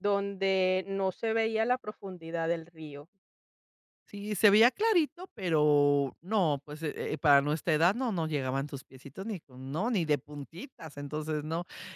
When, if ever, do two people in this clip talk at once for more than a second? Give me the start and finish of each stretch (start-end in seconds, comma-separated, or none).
none